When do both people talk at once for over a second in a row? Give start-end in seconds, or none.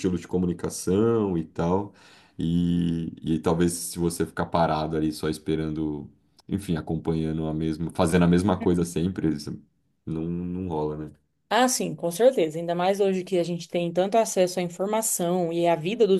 none